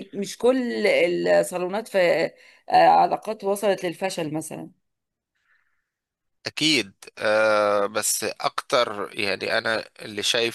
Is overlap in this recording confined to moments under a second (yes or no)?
yes